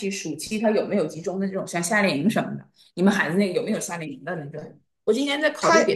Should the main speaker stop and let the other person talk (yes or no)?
no